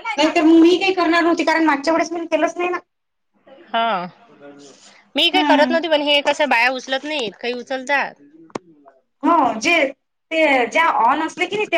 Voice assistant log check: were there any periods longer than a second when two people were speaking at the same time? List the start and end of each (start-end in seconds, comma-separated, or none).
none